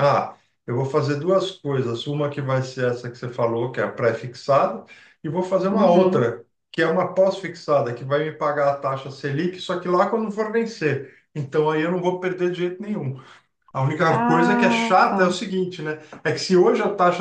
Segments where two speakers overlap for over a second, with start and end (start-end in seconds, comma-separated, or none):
14.1-15.4